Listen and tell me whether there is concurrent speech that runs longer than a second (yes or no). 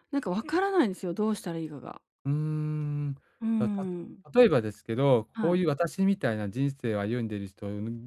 no